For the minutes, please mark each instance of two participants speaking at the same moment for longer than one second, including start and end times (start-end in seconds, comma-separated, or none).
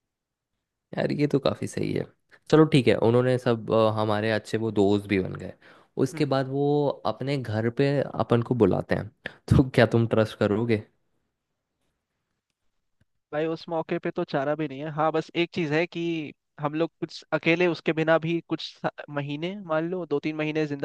none